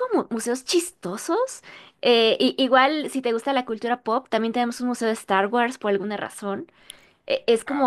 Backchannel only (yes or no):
yes